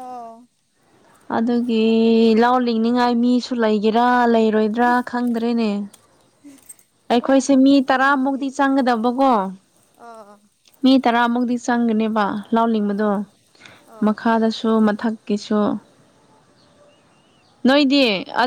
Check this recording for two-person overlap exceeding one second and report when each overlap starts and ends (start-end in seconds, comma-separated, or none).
7.2-8.5